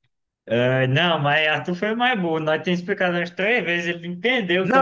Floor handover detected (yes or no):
yes